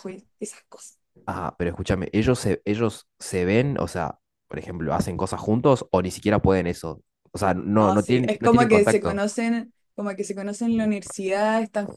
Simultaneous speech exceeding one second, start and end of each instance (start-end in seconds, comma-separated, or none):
7.8-9.2